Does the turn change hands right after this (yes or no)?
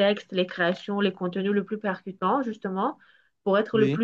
no